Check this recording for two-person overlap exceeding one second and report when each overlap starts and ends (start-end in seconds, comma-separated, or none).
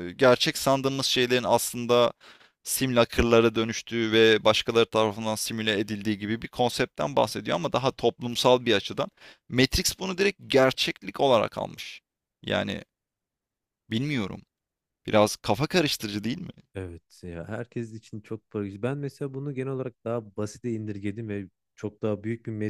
none